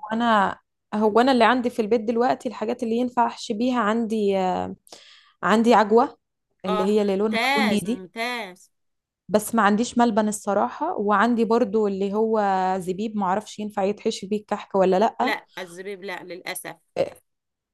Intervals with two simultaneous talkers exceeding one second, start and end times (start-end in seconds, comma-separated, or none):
6.7-8.1